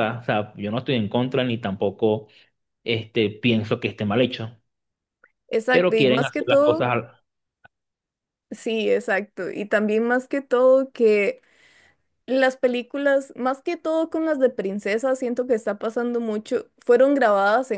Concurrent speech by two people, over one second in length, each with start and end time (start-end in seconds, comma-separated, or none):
5.7-6.9